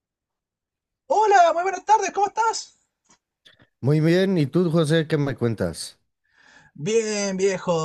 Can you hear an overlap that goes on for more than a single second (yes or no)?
no